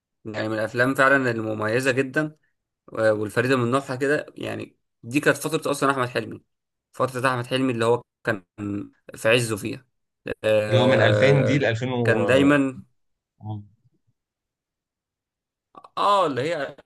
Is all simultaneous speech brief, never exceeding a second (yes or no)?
no